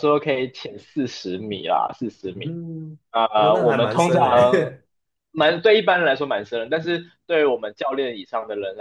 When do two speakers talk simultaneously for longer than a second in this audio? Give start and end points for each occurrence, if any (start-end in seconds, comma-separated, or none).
3.3-4.7